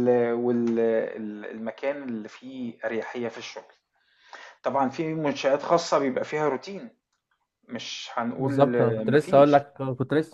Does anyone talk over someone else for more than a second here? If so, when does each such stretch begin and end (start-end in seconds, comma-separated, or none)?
8.4-9.7